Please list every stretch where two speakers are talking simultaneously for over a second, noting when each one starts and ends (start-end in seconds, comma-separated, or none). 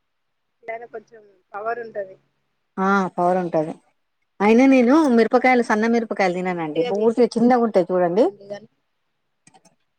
5.4-8.2